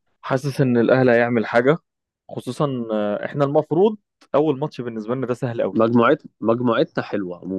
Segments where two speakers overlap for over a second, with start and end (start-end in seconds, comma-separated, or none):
none